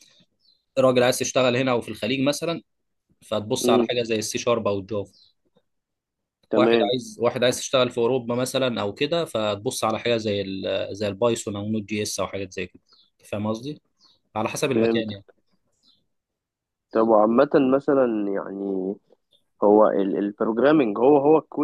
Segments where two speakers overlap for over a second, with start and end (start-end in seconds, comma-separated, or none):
none